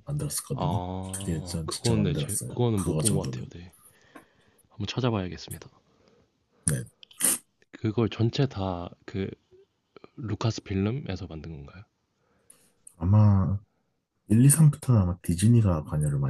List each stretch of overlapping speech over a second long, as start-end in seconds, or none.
0.5-3.5